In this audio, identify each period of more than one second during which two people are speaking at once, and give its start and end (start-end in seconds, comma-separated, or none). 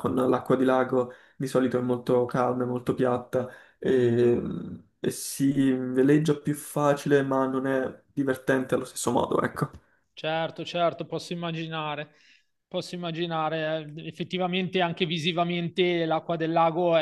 none